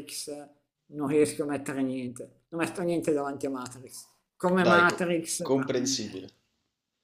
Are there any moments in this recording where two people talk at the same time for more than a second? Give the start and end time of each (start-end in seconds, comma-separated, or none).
4.6-6.2